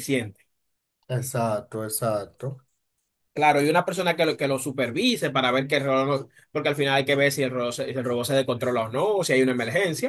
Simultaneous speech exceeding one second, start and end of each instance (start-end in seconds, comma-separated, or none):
none